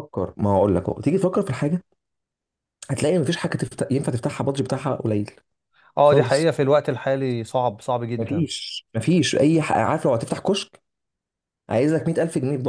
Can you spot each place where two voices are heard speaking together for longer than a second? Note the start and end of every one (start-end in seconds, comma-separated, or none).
none